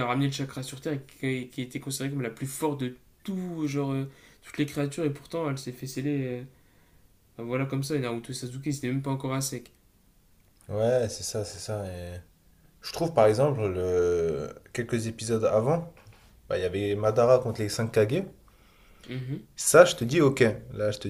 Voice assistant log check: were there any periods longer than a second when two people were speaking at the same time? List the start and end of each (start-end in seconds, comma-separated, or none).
none